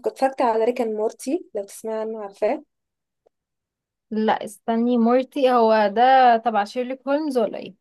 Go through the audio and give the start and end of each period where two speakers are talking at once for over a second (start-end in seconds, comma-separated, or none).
none